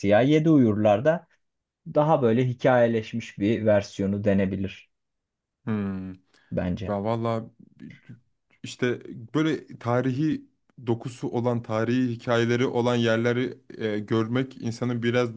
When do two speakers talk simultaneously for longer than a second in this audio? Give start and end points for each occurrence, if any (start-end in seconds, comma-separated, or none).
none